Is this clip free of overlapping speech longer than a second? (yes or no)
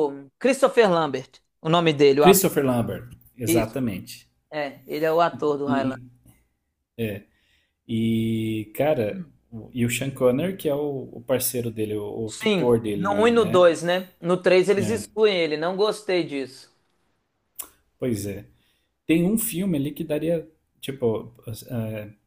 no